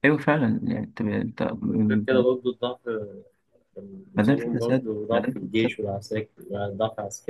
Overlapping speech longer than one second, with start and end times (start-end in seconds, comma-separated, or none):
4.1-5.8